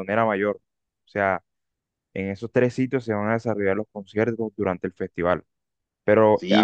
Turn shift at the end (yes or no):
no